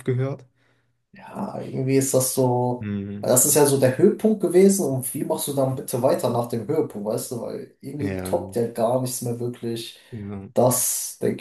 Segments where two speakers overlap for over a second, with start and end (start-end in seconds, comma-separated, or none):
none